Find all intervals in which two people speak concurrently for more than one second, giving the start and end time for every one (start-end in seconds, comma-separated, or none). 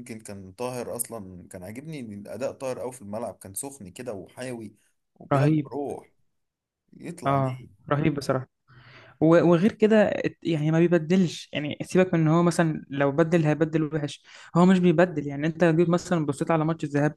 none